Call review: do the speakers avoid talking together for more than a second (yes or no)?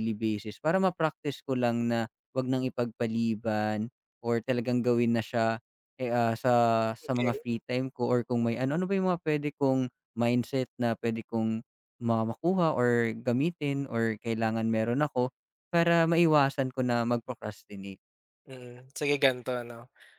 yes